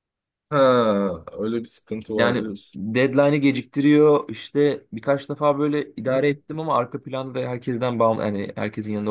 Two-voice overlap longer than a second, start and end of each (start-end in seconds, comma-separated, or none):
none